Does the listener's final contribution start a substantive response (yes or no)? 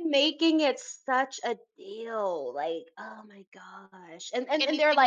yes